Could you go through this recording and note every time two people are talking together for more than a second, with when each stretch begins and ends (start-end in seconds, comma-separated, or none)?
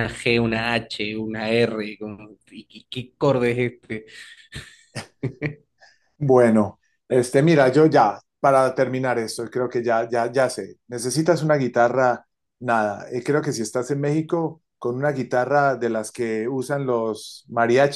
none